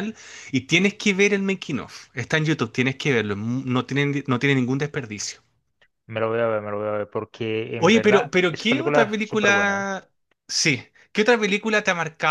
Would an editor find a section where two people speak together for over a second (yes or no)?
yes